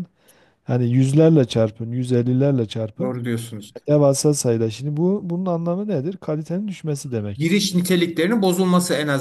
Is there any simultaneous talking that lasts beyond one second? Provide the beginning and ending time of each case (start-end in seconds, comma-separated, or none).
none